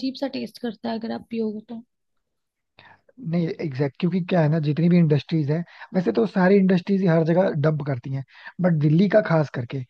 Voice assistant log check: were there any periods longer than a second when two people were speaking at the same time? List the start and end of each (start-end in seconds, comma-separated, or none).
none